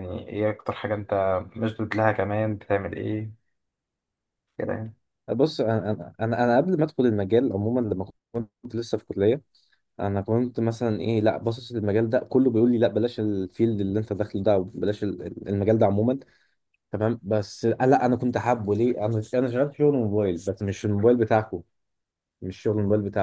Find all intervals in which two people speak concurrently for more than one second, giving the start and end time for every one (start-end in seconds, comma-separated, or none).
none